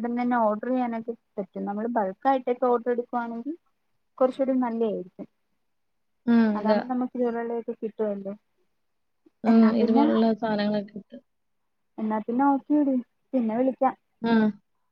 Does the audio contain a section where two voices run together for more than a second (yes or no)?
no